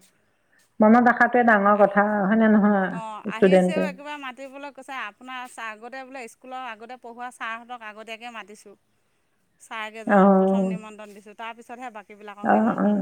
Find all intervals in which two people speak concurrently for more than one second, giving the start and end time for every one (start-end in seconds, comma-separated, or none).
none